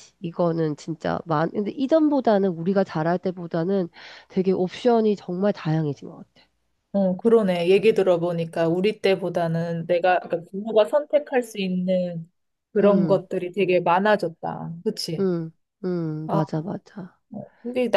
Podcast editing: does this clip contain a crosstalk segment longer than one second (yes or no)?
no